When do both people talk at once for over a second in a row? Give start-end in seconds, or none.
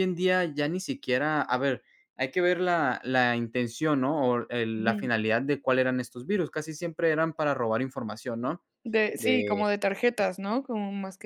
none